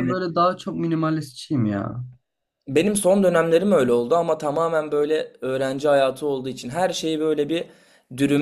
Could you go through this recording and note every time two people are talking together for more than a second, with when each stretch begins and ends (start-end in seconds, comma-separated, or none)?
none